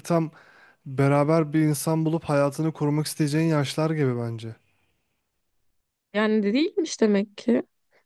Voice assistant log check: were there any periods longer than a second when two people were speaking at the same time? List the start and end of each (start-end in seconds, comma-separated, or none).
none